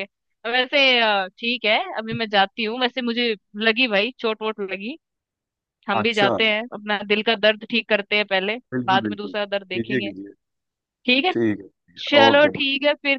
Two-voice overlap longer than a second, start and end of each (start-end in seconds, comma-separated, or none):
8.7-10.1